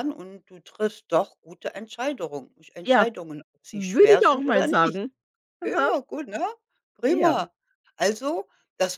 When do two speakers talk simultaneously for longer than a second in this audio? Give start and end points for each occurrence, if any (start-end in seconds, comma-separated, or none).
3.7-5.0